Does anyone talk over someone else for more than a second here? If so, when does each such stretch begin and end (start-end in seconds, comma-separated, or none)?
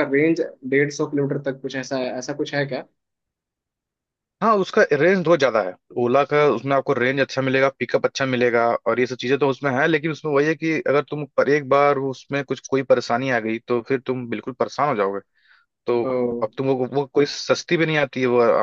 none